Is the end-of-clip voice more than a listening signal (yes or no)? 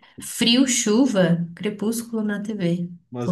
yes